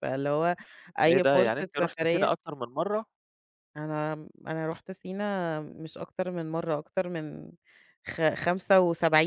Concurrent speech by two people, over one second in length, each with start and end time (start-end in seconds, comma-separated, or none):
1.1-2.3